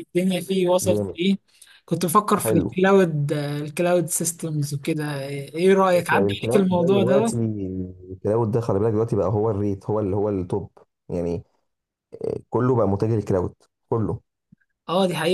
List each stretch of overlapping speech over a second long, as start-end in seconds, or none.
6.1-7.3